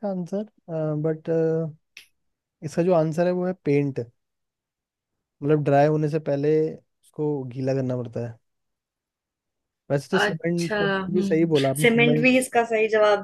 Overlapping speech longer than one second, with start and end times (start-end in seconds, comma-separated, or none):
10.2-12.3